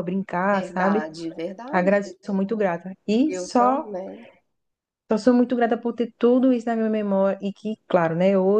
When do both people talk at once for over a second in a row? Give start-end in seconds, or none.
none